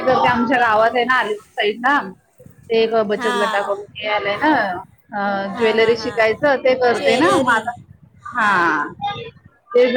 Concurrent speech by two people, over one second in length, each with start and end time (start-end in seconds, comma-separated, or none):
5.5-7.6